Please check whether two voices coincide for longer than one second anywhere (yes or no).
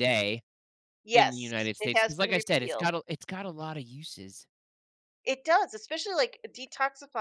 yes